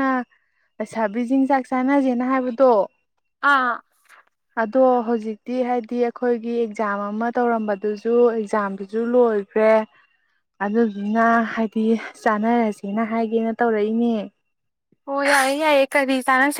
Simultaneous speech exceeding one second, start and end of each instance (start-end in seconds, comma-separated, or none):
none